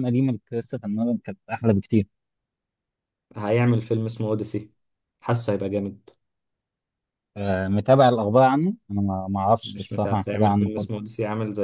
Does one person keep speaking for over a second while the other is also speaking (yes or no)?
yes